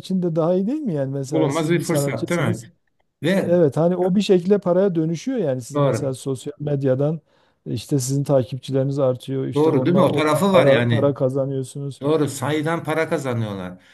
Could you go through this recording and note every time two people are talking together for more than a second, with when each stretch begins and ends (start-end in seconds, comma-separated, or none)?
1.3-2.7, 9.5-11.2